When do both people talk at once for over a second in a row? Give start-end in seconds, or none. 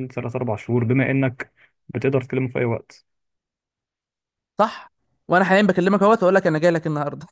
none